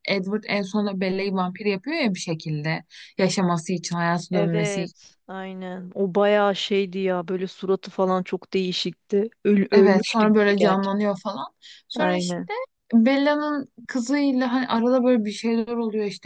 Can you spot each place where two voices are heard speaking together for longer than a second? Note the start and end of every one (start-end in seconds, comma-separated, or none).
9.7-11.0